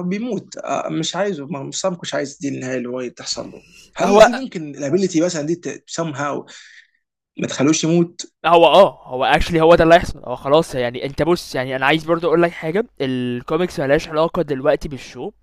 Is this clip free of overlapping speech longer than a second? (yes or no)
yes